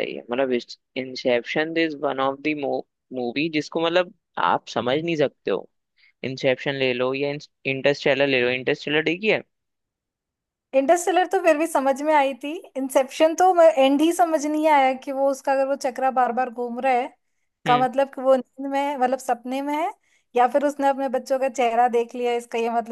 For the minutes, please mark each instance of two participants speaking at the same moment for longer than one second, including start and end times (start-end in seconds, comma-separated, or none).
none